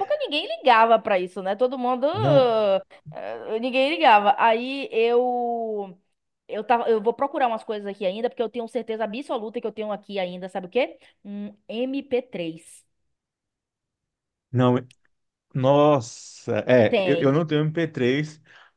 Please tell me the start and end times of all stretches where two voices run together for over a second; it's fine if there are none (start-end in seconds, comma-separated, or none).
none